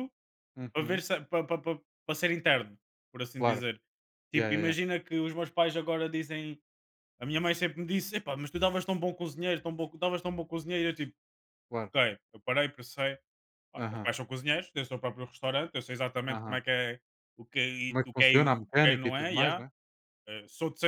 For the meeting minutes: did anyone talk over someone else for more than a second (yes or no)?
yes